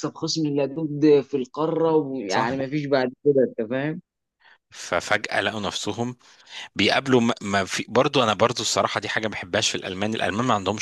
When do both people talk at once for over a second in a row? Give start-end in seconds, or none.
none